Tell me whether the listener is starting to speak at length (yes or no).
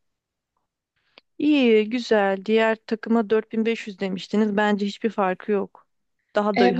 yes